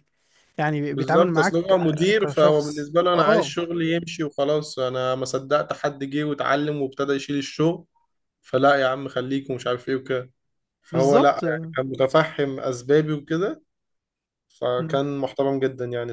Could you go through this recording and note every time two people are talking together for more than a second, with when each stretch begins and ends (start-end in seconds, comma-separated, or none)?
0.9-3.5